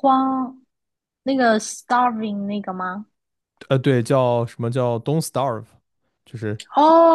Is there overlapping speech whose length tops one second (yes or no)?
no